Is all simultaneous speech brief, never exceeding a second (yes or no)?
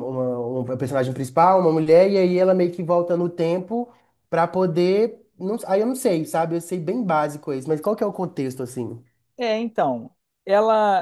yes